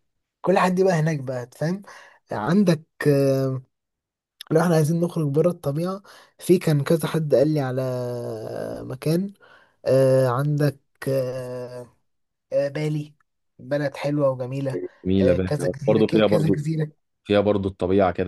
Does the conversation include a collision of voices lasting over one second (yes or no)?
yes